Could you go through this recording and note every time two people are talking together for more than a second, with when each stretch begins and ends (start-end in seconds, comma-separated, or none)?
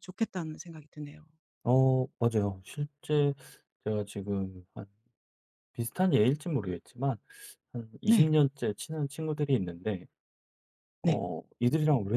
none